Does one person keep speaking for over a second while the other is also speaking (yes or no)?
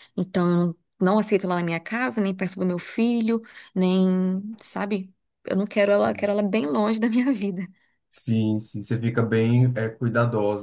no